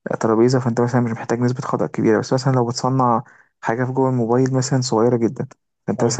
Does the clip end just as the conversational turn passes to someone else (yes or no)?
no